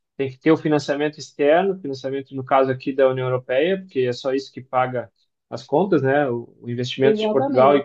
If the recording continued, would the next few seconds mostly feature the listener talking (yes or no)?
no